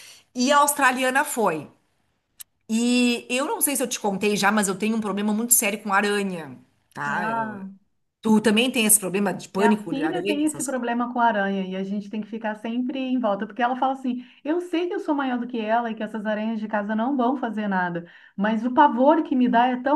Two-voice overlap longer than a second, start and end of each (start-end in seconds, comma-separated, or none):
9.6-10.8